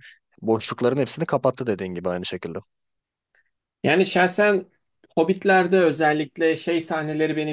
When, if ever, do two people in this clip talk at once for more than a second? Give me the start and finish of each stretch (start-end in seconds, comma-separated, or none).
none